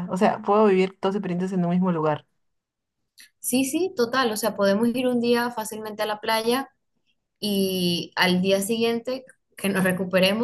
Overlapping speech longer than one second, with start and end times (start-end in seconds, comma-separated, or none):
none